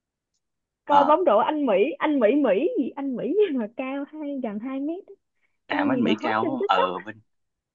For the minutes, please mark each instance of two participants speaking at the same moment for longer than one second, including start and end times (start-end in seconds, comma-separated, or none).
5.7-6.9